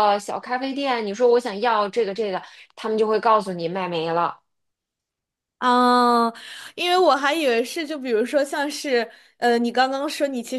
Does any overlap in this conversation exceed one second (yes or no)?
no